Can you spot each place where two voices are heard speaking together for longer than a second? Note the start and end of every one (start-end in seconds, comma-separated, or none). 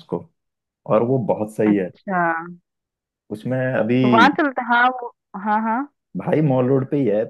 none